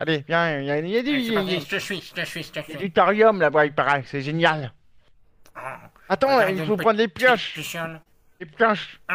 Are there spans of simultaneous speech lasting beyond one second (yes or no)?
yes